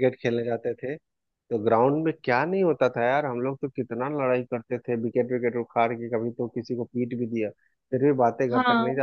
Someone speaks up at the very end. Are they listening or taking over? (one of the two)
listening